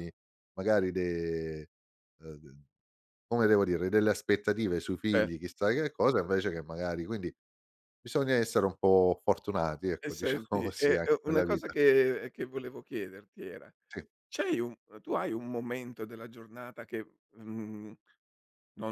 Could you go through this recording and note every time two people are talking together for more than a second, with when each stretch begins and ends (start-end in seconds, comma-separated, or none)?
10.0-11.7